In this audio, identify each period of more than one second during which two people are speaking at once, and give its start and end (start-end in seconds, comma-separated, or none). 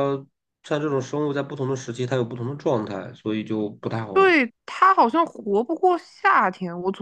none